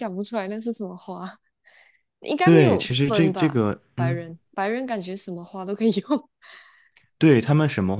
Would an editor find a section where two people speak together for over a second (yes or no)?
yes